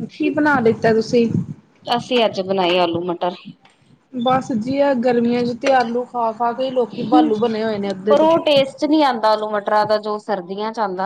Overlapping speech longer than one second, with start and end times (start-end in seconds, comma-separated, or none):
none